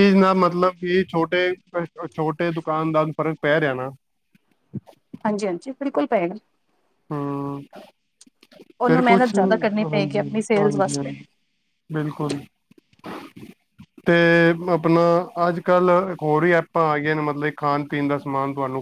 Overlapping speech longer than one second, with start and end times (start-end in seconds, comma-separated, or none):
8.9-11.1